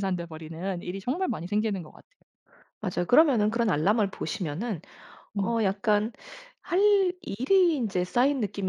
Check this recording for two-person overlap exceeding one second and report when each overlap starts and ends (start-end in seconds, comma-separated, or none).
none